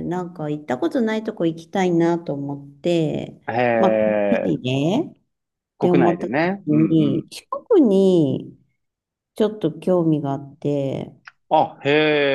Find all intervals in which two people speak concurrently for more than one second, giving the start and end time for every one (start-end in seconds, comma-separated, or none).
5.8-7.3